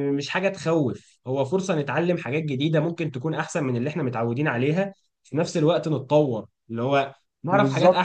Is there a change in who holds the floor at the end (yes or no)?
yes